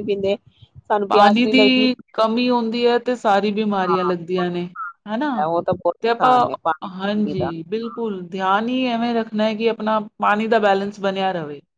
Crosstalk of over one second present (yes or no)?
no